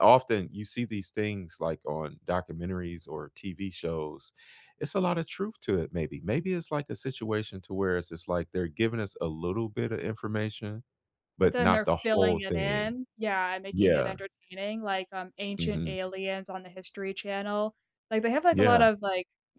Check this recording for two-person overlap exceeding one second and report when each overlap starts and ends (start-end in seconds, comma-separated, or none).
11.4-12.9